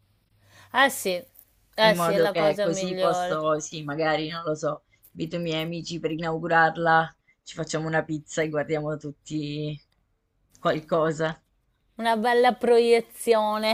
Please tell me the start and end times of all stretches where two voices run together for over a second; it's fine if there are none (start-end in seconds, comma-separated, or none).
1.8-3.4